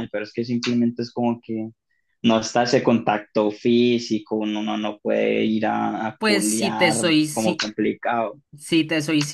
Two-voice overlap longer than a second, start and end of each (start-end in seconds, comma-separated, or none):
6.2-7.6